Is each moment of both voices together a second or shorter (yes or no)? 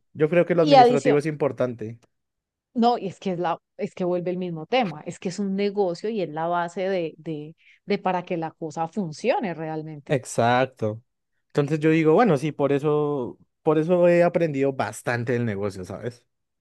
yes